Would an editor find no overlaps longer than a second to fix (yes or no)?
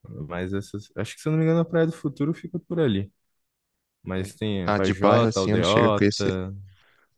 no